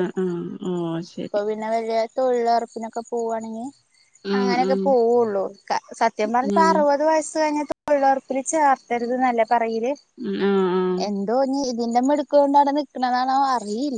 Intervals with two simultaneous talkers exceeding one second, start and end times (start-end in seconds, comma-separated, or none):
none